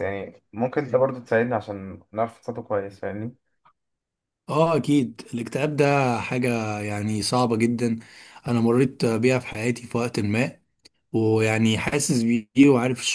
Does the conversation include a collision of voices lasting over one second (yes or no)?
no